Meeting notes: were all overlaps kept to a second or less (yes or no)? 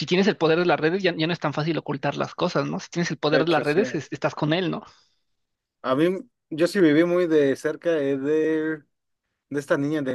yes